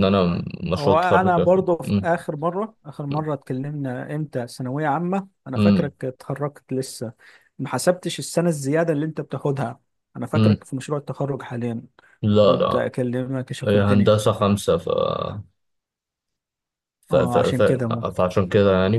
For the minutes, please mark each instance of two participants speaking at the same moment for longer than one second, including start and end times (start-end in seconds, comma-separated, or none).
0.8-2.1